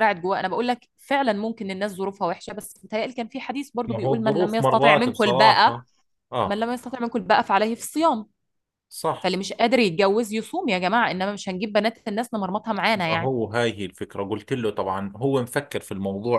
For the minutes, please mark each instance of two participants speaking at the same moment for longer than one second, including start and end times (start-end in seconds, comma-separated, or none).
3.9-5.7